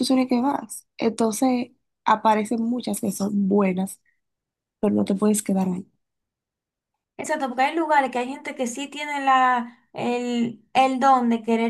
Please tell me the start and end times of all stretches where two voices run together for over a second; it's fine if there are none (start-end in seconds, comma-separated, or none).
none